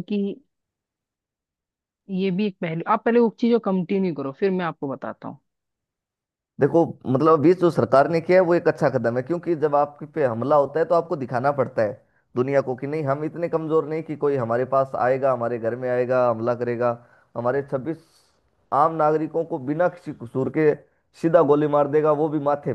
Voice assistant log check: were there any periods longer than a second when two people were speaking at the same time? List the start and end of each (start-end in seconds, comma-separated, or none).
none